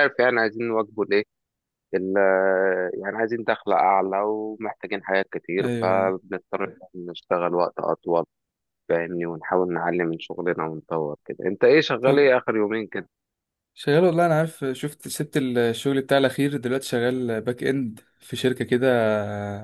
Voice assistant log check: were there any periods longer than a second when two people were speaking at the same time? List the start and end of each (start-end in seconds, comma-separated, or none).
none